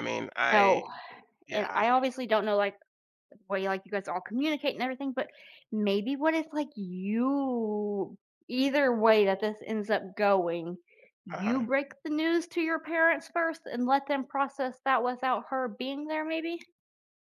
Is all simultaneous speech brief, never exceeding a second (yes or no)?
yes